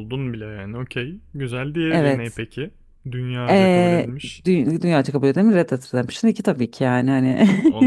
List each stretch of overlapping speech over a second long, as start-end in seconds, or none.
none